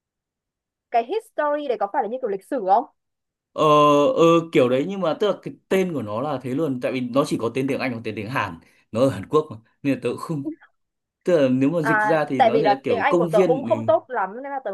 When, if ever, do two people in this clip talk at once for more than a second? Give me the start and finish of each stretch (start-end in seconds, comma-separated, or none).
11.8-13.7